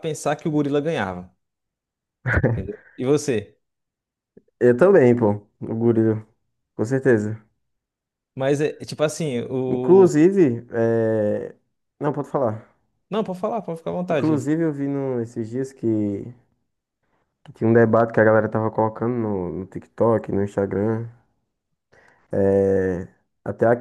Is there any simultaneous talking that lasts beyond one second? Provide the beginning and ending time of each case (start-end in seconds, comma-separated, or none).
none